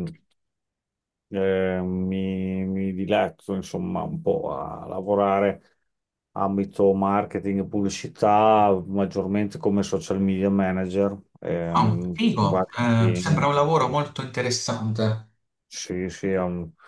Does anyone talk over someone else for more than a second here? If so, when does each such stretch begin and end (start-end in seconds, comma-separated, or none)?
11.8-13.5